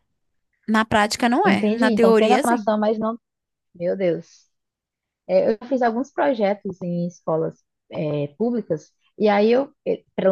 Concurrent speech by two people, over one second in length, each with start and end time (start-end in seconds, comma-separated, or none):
1.4-2.7